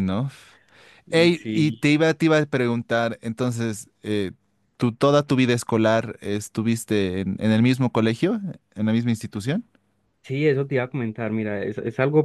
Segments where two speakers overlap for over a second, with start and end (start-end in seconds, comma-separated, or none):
none